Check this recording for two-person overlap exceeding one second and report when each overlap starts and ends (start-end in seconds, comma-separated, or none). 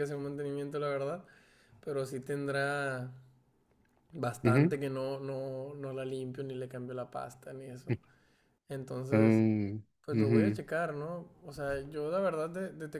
none